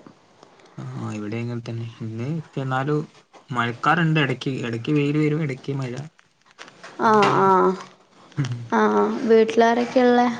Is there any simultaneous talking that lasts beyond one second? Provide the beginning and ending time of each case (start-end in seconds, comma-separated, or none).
none